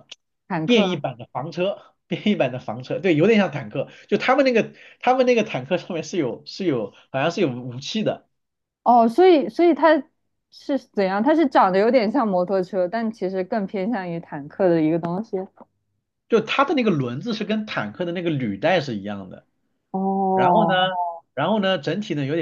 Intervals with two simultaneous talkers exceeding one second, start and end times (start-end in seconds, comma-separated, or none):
none